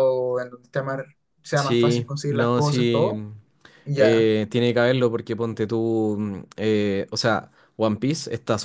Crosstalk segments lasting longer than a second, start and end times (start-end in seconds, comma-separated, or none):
1.5-3.2